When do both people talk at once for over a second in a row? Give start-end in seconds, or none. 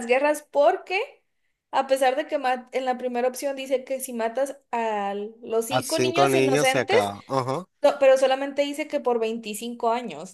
5.7-7.0